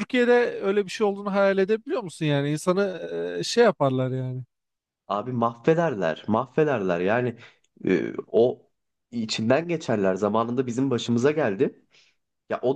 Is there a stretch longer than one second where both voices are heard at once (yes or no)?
no